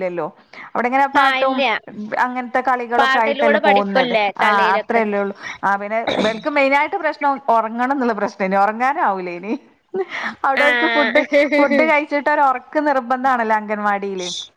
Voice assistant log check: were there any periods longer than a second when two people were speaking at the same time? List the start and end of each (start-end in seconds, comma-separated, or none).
3.0-5.0